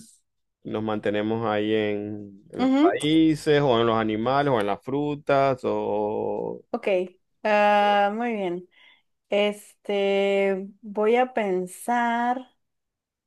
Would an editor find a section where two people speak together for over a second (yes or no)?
no